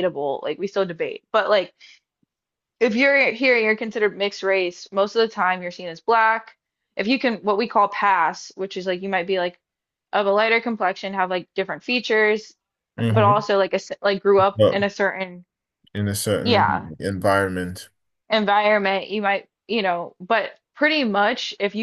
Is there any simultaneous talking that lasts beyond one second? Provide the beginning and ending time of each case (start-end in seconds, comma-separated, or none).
none